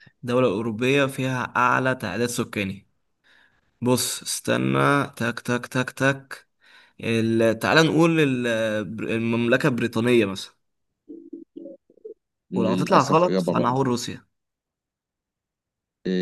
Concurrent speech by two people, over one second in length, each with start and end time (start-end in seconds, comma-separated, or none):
12.5-13.8